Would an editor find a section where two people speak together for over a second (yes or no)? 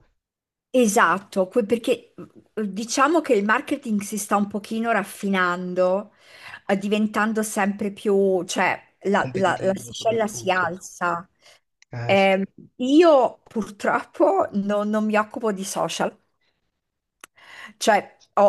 yes